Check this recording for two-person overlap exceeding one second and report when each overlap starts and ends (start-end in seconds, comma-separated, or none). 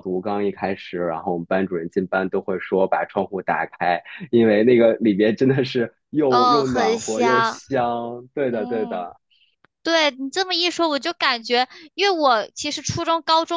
6.3-7.6